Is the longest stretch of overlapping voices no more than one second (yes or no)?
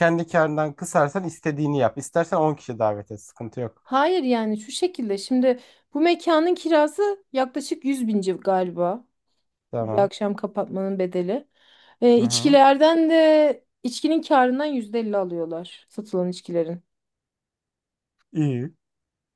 yes